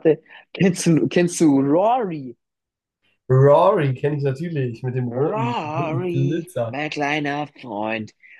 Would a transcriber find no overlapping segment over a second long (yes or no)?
no